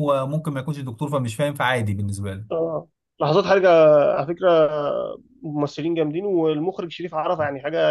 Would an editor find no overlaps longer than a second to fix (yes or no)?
yes